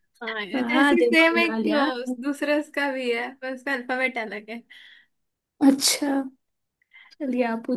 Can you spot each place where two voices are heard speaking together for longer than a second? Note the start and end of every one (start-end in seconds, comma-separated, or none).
0.5-1.9